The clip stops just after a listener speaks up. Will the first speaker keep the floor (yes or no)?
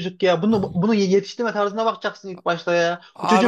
no